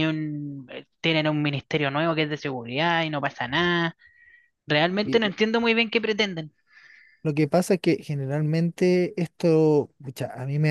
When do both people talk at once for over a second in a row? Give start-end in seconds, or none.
none